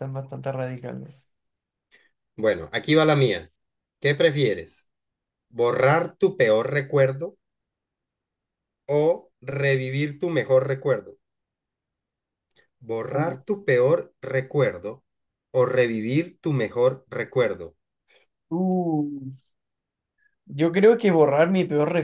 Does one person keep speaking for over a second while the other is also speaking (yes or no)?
no